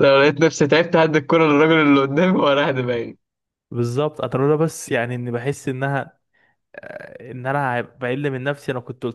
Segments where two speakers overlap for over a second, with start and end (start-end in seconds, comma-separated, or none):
none